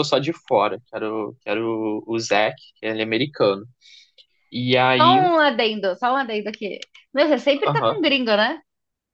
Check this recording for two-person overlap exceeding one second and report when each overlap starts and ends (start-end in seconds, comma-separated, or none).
none